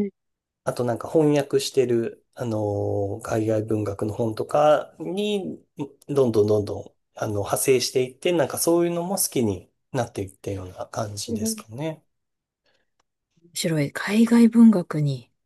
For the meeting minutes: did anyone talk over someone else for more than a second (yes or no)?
no